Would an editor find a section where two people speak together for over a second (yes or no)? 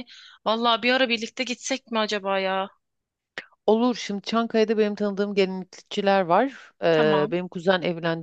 no